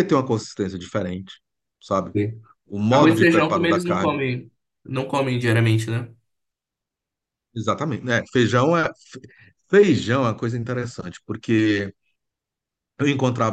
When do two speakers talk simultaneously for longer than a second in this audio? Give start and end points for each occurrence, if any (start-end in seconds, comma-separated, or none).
2.9-4.2